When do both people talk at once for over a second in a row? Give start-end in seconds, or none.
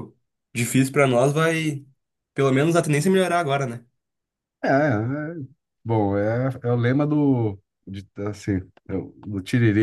none